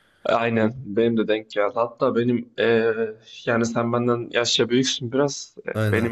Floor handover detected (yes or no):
no